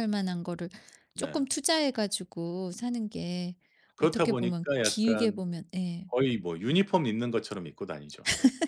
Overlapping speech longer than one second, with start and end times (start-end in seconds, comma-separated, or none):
4.0-5.4